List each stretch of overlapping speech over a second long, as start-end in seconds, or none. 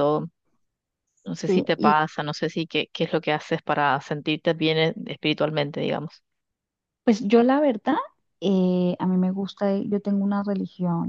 none